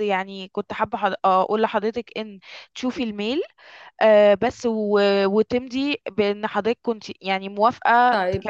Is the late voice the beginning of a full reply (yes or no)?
yes